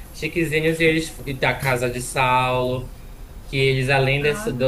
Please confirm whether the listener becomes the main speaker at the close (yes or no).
no